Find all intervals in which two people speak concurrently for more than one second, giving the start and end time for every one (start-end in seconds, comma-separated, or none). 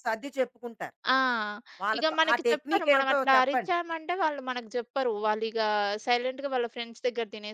2.0-4.0